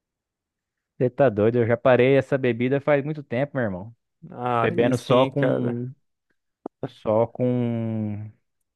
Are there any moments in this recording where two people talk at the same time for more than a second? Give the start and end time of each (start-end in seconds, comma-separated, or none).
4.6-5.8